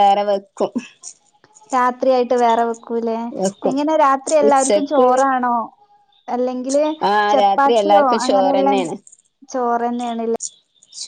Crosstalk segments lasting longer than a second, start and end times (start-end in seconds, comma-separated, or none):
7.3-8.8